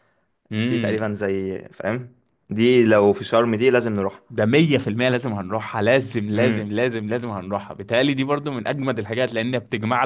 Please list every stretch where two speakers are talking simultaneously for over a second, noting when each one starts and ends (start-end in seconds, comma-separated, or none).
none